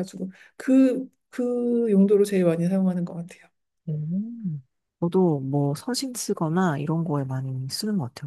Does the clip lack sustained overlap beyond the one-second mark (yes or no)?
yes